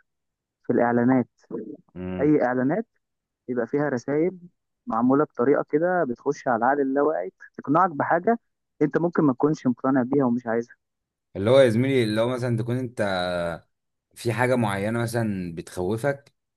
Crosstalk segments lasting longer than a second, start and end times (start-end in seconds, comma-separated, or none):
none